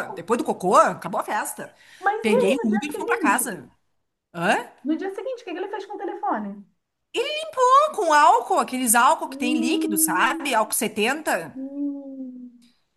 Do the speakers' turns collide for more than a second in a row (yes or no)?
yes